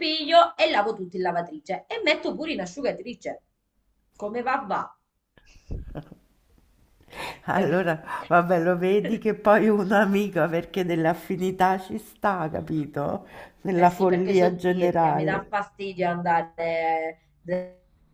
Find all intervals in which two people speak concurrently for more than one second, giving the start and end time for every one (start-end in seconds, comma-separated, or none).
13.7-15.5